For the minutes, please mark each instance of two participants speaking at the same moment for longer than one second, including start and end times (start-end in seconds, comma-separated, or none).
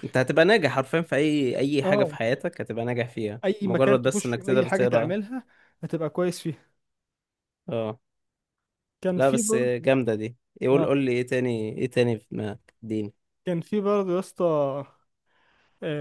3.4-5.1